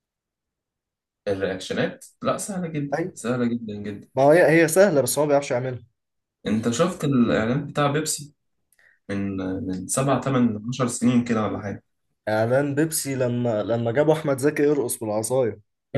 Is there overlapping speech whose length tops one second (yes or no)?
no